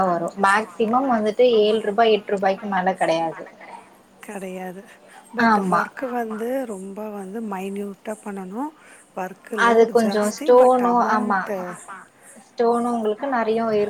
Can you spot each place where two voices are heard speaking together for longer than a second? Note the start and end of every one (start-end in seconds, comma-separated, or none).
none